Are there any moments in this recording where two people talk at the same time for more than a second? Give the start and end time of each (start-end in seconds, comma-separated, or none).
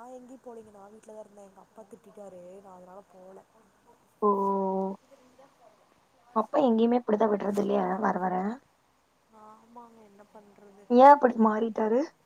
none